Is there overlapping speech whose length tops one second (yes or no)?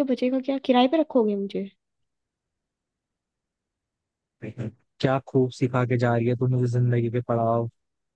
no